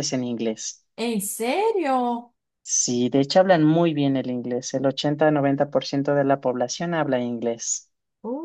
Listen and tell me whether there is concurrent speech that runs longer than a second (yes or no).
no